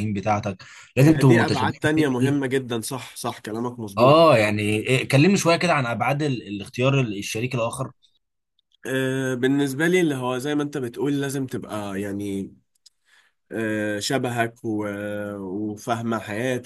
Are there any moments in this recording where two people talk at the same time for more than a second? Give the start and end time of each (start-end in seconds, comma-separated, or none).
1.0-2.4